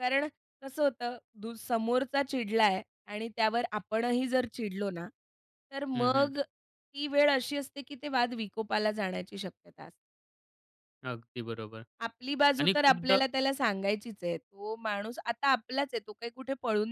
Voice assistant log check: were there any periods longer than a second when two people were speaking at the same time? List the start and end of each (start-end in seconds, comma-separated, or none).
none